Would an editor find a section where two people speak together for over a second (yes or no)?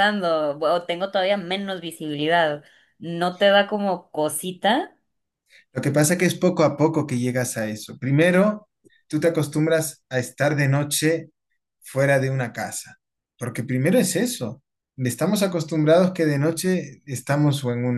no